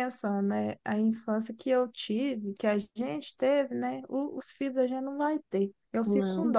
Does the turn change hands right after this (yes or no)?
no